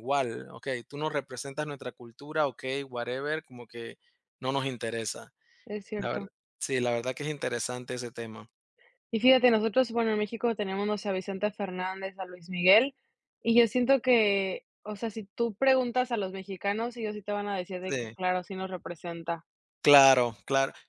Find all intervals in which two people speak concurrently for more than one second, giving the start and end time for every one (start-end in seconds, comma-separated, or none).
none